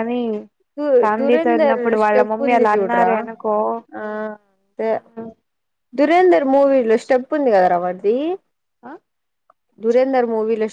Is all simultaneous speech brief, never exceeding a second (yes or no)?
no